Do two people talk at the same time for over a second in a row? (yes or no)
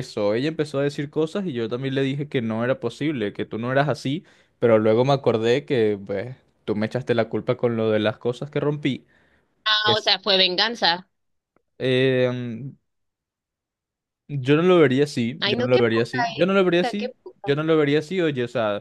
yes